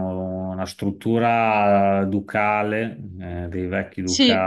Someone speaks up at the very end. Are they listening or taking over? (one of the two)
taking over